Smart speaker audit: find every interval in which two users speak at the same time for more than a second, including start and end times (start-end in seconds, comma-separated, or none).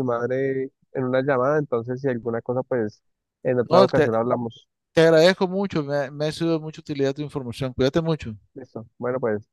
none